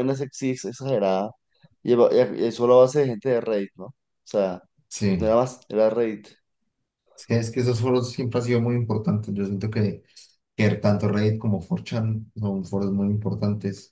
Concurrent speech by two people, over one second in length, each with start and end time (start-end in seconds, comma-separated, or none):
none